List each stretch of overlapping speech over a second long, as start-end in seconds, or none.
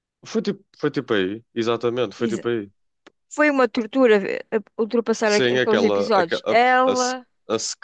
5.2-7.3